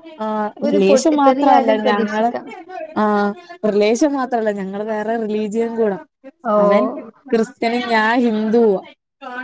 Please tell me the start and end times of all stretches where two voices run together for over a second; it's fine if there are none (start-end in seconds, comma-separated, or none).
0.7-2.3